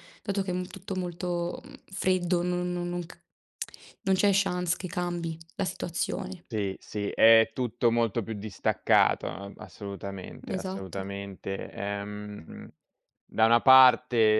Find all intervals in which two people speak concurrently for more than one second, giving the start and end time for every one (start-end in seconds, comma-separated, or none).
none